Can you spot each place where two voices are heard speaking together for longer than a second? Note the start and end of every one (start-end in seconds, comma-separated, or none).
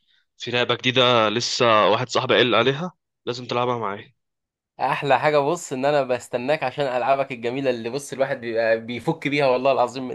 none